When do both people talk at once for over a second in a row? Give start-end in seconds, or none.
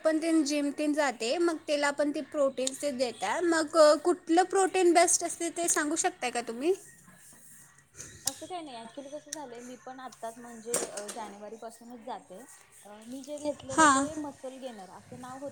none